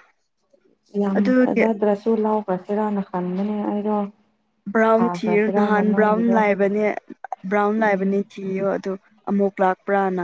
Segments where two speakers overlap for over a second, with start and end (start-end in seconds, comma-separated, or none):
5.0-6.4